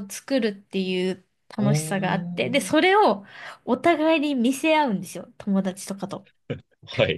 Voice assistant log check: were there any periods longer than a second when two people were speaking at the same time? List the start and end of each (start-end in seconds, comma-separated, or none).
1.6-2.9